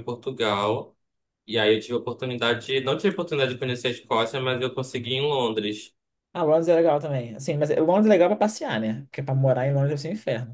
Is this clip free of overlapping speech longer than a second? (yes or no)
yes